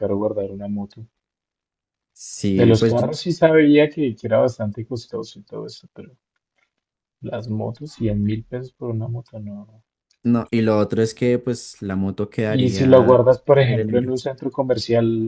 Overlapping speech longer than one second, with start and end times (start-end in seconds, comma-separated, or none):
12.5-14.1